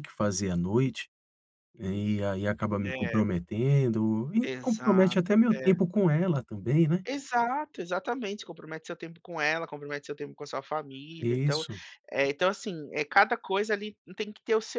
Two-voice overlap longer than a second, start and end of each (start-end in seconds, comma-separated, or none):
4.4-5.8